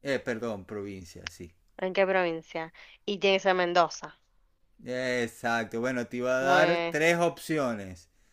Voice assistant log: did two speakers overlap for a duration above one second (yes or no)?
no